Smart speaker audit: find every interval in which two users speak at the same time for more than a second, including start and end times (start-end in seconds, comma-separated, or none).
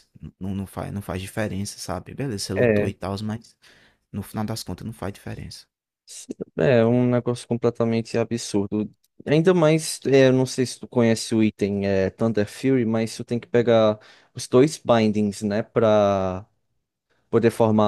none